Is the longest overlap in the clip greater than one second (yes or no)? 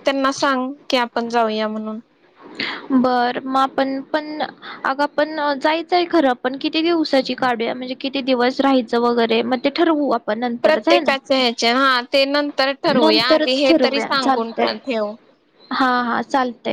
yes